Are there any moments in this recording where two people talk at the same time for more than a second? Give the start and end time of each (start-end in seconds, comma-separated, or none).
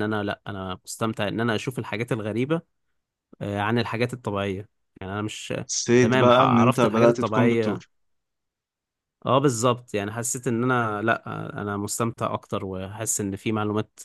6.0-7.8